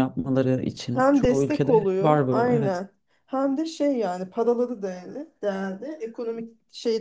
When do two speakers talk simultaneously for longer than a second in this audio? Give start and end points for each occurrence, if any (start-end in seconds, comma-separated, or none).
0.9-2.8